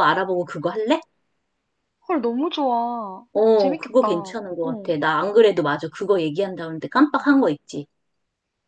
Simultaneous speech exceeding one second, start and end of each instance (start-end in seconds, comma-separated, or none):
3.3-4.9